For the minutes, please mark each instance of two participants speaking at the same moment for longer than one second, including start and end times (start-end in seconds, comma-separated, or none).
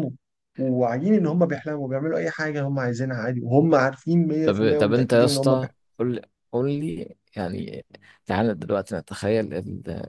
4.4-5.8